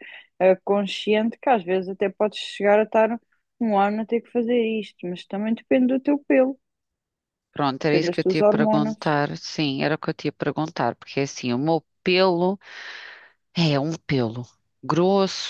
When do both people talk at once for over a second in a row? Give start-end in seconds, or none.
7.8-9.0